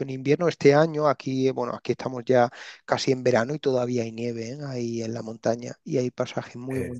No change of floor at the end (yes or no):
yes